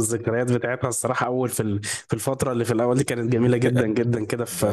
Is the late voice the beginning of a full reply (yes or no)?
no